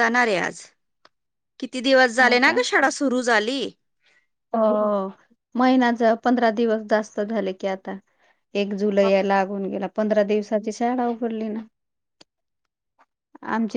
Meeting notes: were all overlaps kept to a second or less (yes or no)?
yes